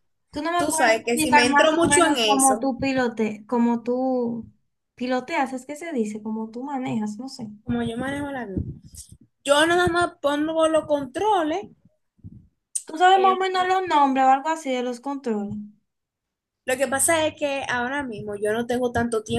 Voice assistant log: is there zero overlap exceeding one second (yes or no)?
no